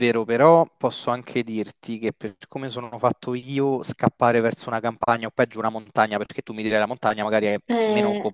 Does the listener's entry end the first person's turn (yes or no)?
no